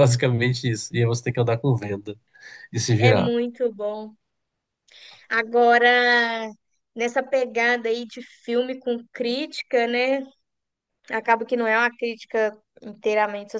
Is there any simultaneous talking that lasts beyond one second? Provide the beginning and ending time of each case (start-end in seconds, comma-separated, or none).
none